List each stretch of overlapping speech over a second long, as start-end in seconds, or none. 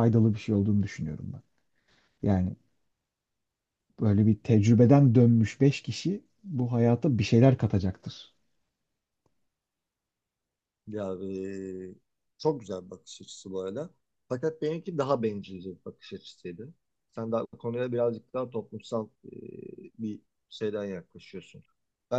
none